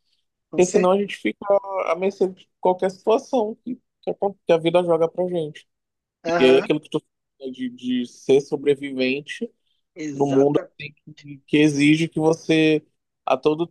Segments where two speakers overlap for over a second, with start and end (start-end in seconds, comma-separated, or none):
none